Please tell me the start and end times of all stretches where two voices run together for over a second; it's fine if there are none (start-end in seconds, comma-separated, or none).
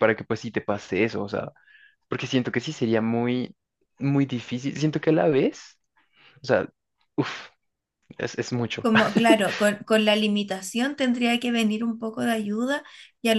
none